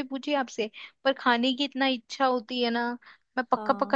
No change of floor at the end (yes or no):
no